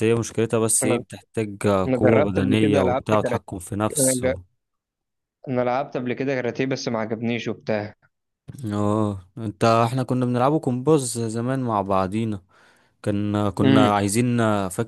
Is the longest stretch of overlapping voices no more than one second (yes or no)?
no